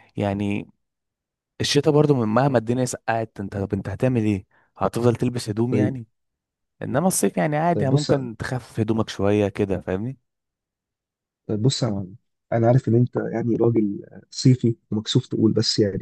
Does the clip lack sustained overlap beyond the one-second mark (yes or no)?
yes